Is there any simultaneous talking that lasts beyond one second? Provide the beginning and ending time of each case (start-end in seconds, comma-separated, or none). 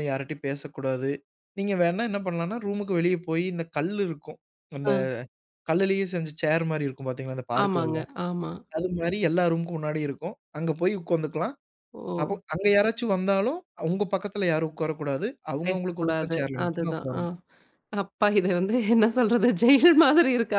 15.7-17.2